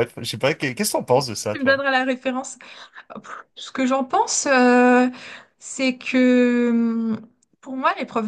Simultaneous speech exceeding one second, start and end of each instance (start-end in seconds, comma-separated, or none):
none